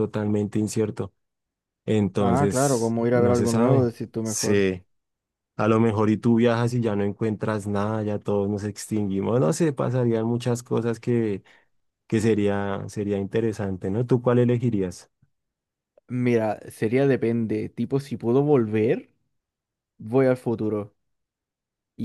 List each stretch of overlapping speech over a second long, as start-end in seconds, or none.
2.2-4.6